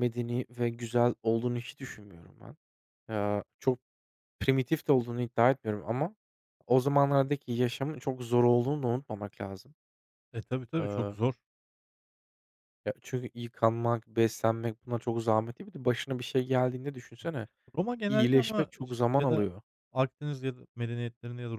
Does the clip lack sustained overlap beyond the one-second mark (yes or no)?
no